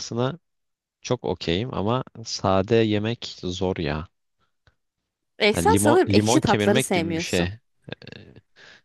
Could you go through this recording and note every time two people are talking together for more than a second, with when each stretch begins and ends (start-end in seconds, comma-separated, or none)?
5.5-7.5